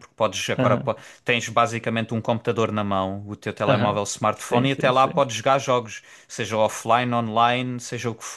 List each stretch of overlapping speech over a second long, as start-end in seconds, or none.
3.7-5.2